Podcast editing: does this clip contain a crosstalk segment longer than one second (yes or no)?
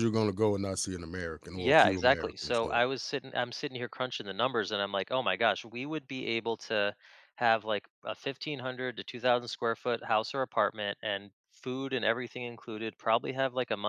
yes